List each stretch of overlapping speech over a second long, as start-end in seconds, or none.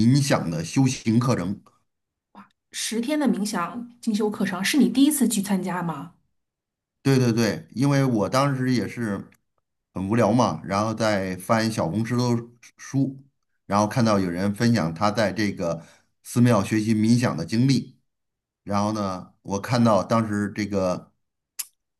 none